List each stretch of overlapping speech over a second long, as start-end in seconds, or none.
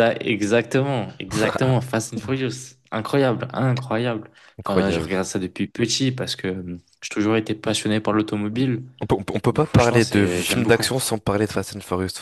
9.5-10.8